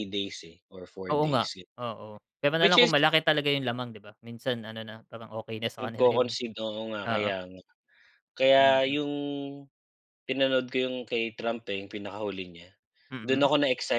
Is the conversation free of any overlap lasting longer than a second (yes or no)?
yes